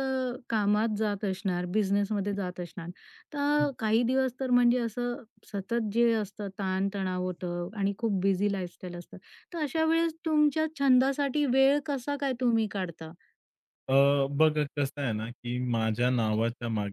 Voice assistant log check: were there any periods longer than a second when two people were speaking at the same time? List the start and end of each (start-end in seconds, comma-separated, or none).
none